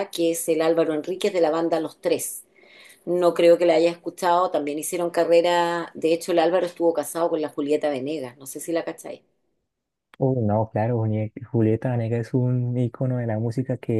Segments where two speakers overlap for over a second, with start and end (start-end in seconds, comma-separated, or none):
none